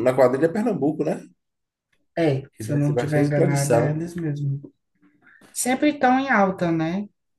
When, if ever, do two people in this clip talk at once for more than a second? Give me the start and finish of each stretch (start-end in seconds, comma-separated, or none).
2.5-4.1